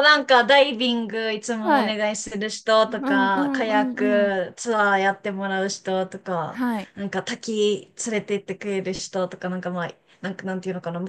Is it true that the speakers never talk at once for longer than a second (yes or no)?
no